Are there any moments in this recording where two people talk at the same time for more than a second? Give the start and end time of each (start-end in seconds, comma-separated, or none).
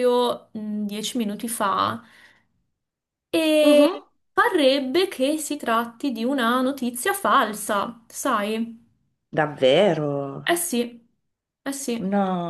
none